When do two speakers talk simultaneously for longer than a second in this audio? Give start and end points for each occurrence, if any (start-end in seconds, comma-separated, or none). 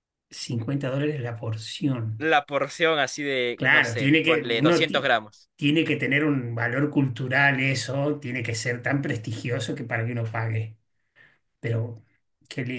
3.5-5.1